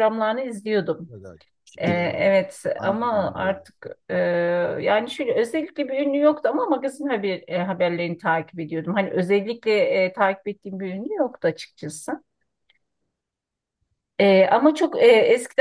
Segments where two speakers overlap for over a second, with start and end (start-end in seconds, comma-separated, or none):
1.8-3.6